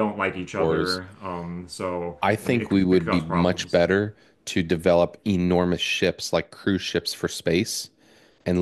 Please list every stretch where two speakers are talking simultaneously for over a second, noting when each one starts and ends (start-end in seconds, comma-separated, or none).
2.2-3.8